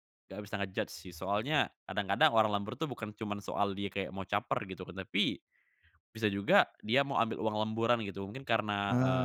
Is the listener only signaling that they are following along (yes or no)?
yes